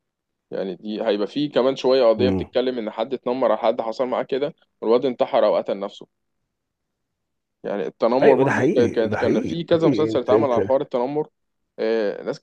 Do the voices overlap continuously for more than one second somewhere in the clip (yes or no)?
yes